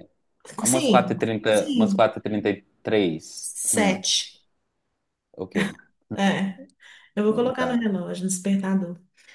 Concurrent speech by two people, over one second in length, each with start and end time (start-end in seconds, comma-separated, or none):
0.6-2.1